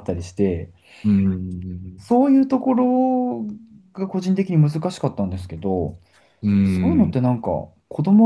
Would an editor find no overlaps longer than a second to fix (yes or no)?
yes